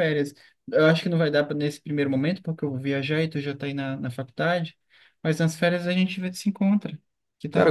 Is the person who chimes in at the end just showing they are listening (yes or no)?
no